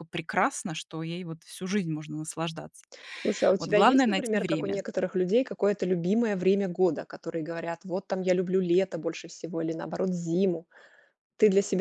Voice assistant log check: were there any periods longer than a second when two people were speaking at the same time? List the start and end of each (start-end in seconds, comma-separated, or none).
3.6-4.8